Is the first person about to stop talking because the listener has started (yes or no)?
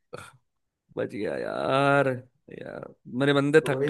yes